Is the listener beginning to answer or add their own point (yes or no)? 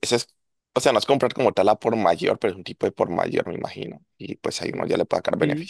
yes